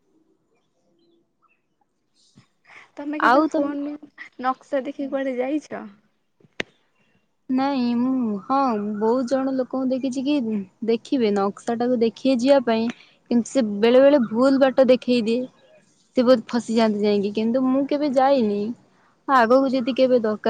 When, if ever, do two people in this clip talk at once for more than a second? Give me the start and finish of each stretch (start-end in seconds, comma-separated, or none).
none